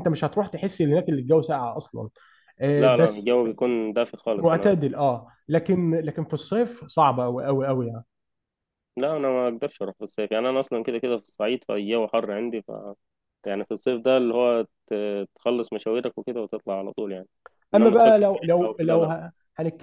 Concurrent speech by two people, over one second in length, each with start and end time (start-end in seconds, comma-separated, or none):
17.8-19.1